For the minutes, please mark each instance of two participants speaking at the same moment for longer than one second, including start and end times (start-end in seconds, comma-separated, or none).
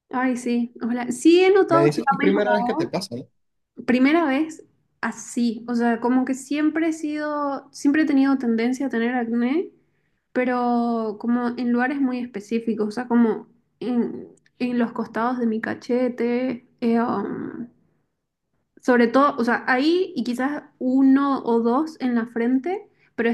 1.7-2.9